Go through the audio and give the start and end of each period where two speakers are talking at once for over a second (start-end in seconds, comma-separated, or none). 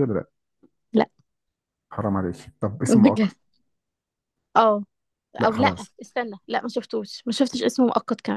none